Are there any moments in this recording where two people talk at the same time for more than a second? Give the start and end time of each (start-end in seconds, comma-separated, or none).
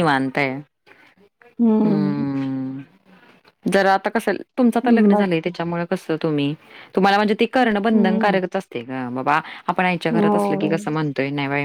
none